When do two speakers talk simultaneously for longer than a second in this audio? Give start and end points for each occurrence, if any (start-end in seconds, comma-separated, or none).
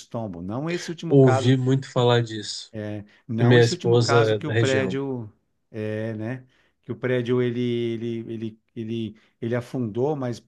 3.4-5.0